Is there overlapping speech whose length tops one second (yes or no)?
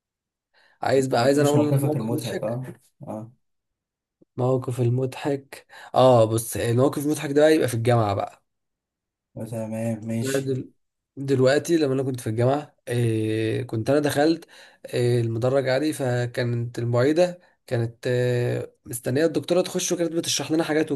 yes